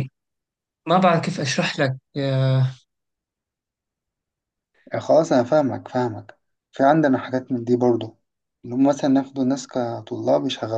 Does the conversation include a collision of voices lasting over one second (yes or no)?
no